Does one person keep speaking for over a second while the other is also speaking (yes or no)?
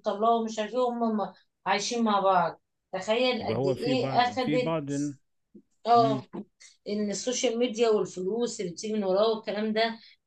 yes